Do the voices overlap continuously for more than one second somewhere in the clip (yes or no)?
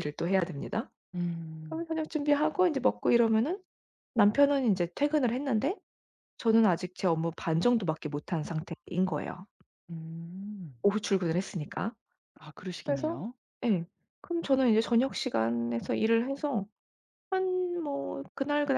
no